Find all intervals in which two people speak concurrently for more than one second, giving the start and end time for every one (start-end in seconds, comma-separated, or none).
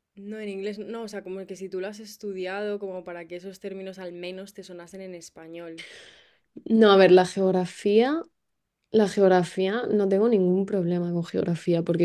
none